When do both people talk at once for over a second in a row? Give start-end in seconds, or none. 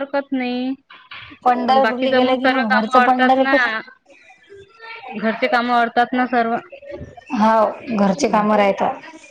1.7-3.5